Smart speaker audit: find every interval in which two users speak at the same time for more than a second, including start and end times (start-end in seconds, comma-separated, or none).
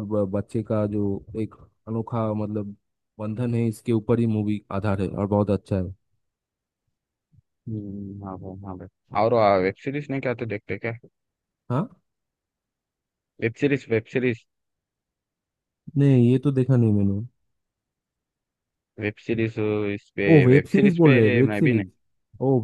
20.3-21.9